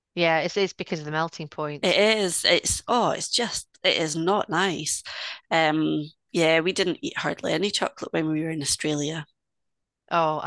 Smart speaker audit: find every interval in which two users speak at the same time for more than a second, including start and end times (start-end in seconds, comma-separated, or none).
none